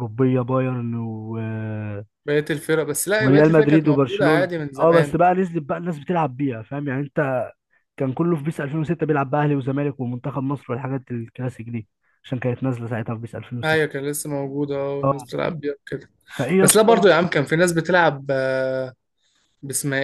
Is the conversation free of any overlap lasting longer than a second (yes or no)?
no